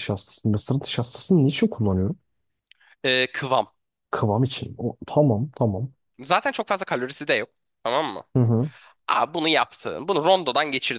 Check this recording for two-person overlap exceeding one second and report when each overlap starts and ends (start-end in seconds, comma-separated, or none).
none